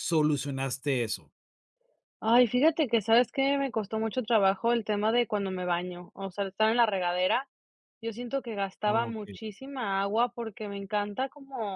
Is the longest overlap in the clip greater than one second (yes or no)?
no